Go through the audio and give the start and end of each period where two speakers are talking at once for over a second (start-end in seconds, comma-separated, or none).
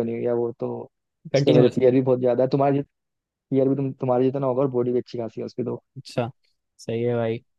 none